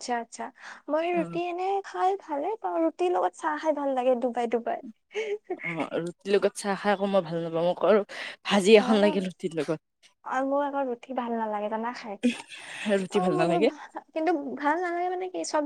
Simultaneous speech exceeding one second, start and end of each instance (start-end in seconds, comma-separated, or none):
none